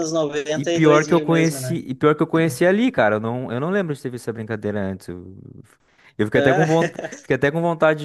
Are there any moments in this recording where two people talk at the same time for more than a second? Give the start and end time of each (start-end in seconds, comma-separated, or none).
0.5-1.8